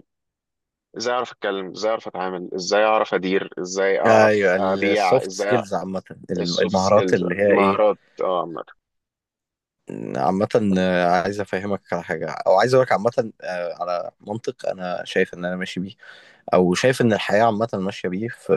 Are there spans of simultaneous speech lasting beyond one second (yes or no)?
yes